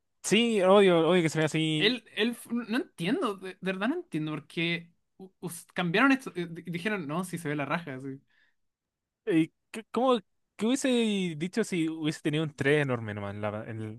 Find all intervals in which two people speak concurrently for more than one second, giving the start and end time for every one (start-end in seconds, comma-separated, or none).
none